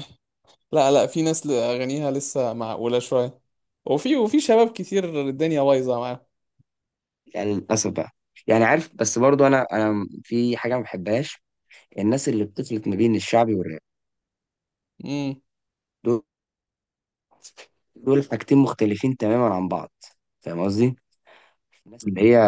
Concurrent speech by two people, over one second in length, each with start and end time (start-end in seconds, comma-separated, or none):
none